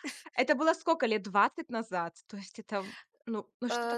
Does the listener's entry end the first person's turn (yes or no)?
yes